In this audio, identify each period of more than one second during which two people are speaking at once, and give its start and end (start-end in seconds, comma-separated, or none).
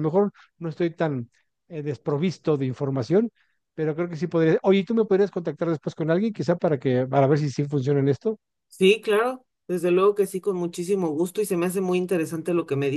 none